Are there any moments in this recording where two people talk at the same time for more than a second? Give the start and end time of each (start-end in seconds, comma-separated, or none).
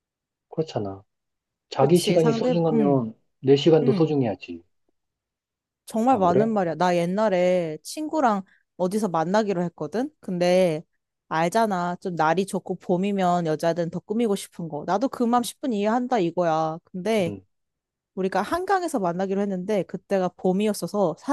1.8-3.0